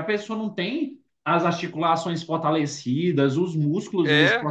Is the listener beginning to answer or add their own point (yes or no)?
no